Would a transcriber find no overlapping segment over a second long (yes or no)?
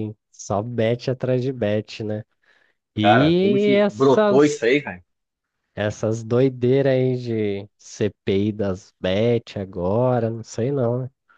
no